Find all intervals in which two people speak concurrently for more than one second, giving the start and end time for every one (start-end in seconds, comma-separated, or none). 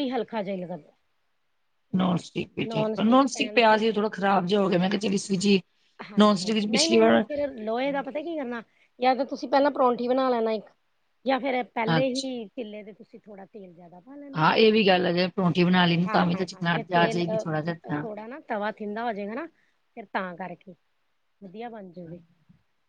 16.3-18.1